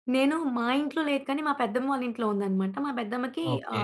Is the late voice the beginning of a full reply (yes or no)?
no